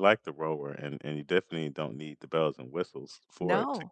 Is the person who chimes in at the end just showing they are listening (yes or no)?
yes